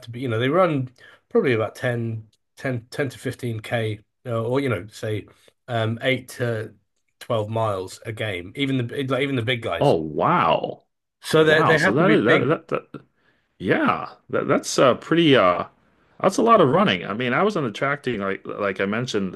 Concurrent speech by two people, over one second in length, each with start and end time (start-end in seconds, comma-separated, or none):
11.3-12.5